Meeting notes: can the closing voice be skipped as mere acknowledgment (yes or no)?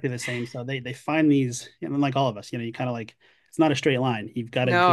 yes